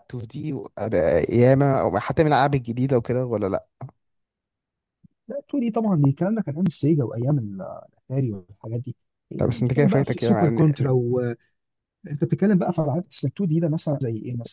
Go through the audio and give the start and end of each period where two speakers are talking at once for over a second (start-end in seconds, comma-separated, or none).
9.4-10.9